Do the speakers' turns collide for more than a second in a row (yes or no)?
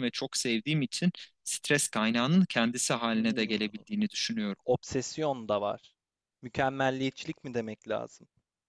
no